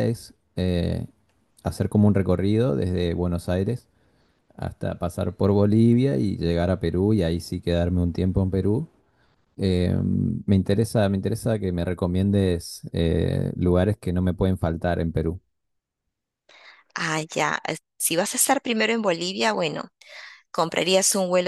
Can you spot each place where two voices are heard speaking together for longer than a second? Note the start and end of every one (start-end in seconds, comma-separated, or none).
none